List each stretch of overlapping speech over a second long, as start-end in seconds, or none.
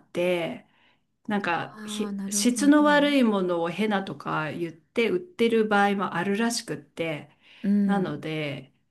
1.8-3.1